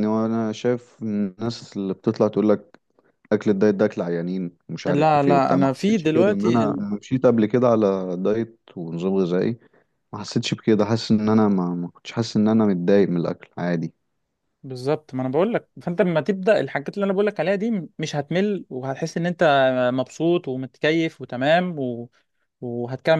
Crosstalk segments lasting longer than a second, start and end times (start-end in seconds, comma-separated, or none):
4.8-6.7